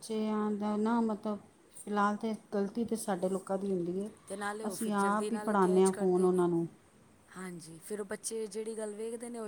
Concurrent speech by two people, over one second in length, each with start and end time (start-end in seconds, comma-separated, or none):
4.7-6.4